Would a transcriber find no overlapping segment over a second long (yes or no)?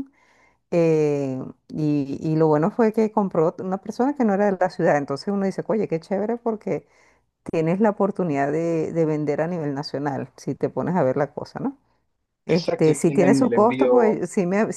no